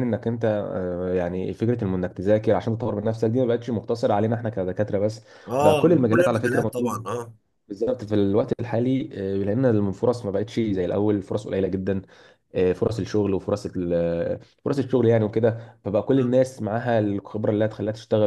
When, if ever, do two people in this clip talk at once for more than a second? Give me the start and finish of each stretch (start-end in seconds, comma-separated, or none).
5.6-7.1